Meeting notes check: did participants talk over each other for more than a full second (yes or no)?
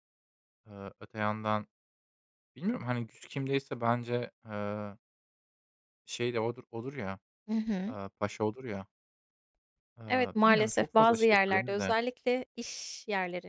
yes